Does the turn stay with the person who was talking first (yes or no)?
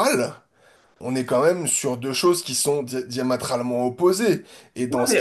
yes